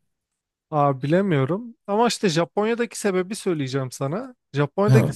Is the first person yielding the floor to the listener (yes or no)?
no